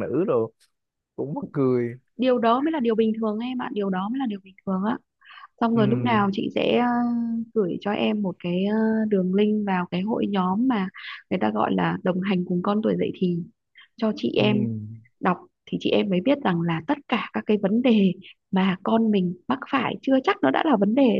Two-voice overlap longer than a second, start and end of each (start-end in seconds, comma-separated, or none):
none